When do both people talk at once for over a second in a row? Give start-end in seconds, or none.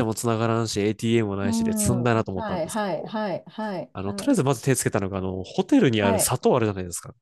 1.4-3.1